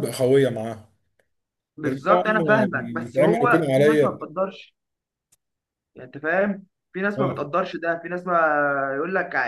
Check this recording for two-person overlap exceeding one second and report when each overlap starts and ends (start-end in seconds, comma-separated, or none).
1.9-4.2